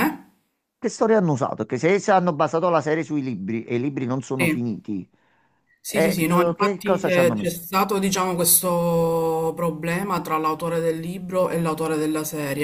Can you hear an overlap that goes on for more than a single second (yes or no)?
yes